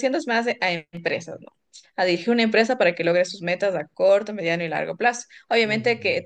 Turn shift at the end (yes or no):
no